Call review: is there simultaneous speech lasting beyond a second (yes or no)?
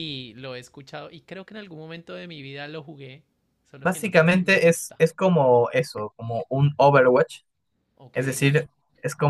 yes